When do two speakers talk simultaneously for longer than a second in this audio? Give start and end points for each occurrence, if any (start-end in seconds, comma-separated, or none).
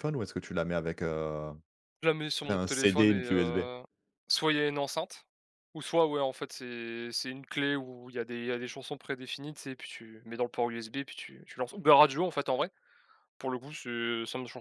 2.5-3.7